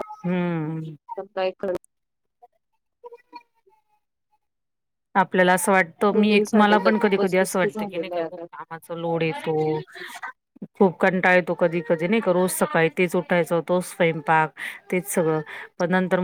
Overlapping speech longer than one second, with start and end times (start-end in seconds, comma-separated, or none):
6.1-8.4